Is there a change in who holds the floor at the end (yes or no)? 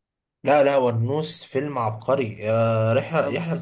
no